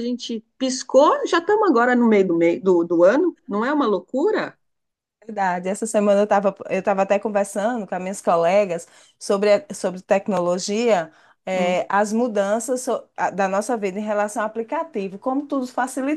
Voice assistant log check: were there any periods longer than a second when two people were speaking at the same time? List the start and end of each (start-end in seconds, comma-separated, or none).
none